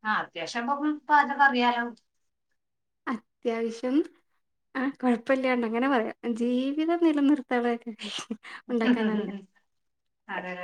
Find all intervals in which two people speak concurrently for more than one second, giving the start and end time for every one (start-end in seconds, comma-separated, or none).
none